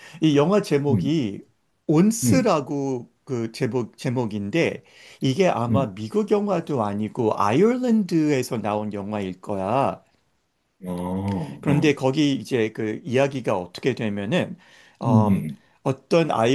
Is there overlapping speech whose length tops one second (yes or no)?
no